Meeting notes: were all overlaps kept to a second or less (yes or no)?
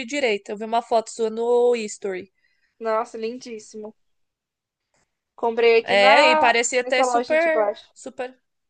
no